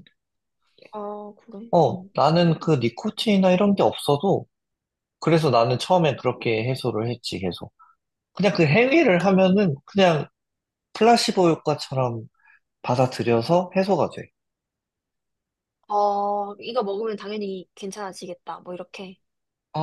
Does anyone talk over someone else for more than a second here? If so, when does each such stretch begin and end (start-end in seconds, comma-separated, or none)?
none